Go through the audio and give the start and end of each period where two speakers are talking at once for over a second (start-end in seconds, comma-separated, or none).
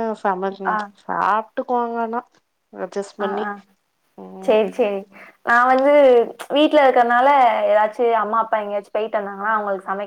none